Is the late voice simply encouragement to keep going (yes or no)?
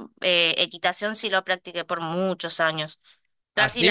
no